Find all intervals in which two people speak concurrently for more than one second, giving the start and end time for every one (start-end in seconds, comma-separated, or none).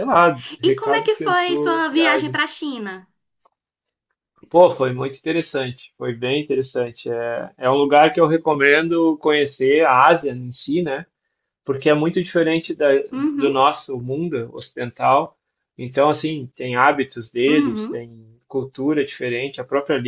0.6-2.4